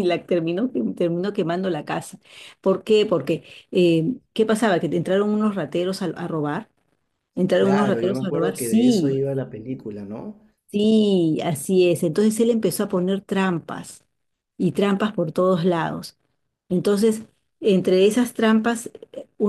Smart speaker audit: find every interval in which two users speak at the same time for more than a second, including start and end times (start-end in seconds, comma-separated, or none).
7.6-9.2